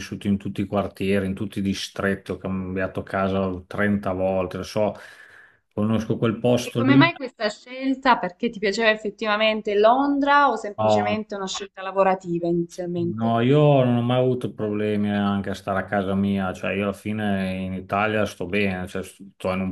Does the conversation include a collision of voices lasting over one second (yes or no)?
no